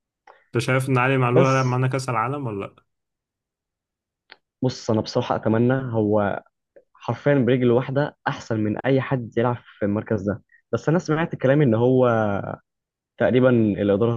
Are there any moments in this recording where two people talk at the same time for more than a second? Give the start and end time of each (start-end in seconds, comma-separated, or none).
none